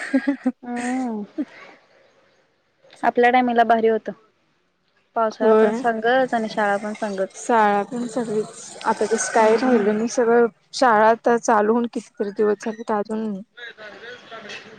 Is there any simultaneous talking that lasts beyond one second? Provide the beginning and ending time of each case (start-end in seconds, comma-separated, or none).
none